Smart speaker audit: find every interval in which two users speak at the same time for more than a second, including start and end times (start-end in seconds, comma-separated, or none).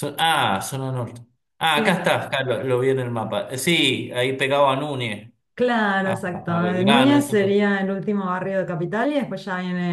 6.0-7.6